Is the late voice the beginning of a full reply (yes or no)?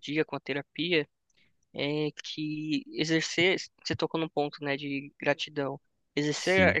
no